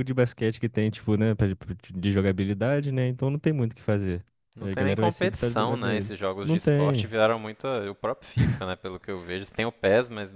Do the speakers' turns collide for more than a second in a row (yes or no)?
yes